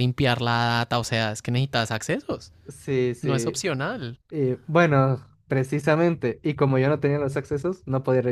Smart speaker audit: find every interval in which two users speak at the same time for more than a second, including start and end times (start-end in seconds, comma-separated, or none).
none